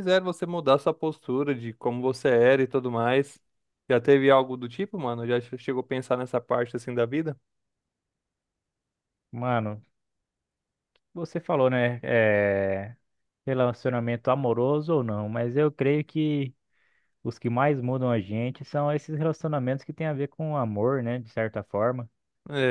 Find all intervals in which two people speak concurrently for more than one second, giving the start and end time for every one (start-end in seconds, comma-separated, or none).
none